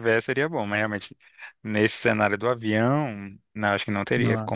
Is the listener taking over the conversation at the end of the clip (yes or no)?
no